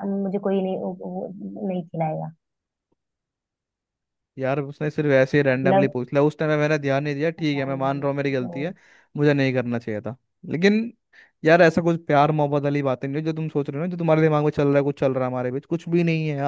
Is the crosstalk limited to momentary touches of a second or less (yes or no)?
yes